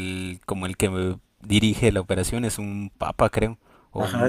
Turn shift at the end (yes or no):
yes